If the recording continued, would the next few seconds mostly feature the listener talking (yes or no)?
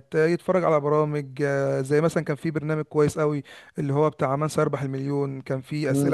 yes